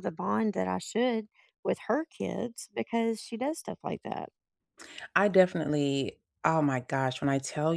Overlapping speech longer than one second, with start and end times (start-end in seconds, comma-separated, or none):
none